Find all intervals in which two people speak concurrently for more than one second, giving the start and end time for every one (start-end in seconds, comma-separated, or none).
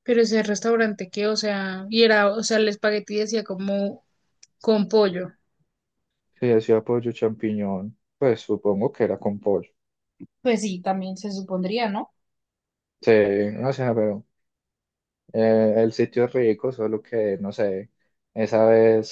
none